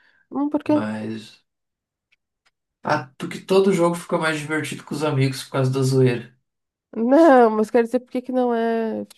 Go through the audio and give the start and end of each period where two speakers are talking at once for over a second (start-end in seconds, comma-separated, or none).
none